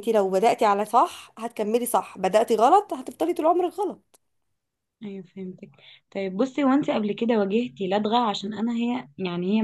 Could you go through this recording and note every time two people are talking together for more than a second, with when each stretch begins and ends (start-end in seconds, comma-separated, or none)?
none